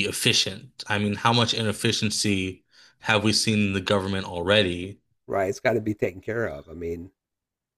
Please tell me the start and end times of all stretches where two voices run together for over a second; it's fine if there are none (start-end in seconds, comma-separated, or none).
none